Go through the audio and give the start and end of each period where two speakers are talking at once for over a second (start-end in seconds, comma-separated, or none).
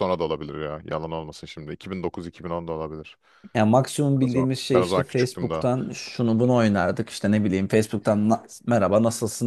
4.2-5.7